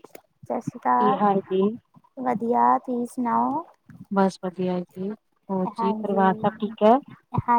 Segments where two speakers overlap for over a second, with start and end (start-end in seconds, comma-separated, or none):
none